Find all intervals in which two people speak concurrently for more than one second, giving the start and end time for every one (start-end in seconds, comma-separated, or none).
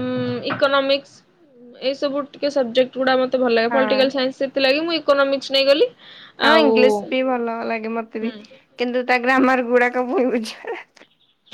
none